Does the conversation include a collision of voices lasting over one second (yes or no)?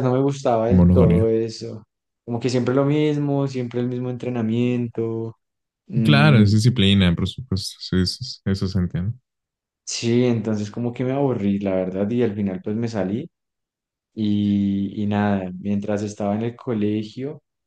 no